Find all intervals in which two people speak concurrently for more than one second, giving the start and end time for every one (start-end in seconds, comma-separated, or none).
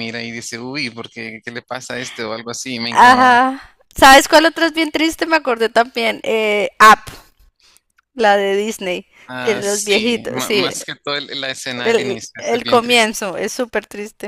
9.2-10.7, 11.8-13.2